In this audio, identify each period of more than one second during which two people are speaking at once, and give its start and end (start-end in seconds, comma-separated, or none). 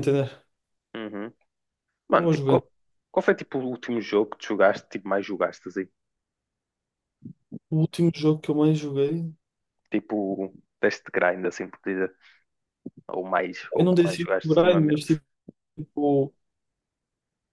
13.8-15.1